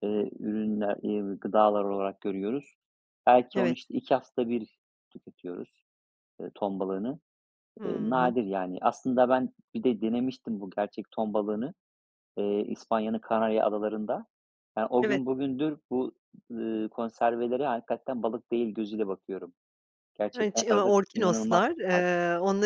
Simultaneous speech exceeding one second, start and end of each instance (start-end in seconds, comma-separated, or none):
20.4-22.1